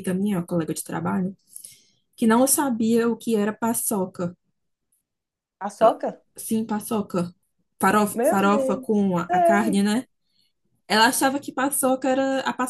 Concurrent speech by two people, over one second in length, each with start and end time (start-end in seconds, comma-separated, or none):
8.2-9.8